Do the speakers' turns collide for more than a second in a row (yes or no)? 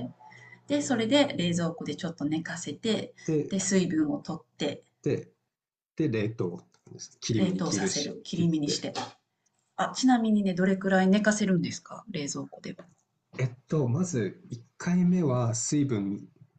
yes